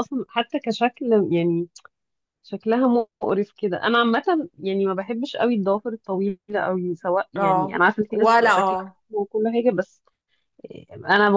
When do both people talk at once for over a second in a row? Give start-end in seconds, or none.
7.3-9.0